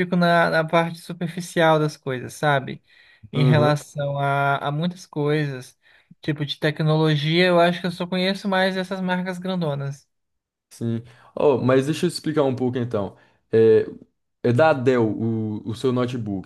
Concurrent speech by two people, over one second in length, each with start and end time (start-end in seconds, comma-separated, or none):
none